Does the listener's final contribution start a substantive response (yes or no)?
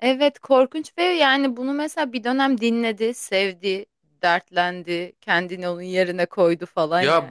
yes